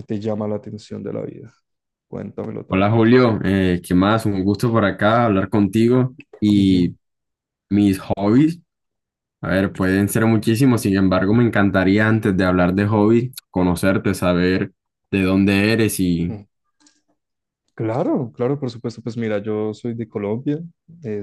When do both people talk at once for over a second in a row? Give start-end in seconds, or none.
none